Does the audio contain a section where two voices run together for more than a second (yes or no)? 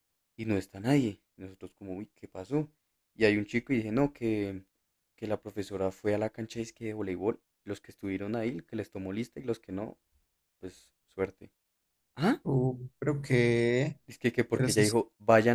no